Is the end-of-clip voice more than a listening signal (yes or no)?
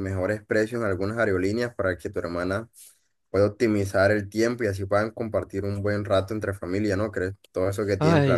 yes